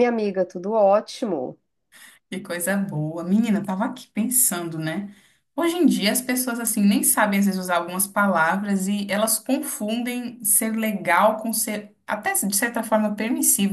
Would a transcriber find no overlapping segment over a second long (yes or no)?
yes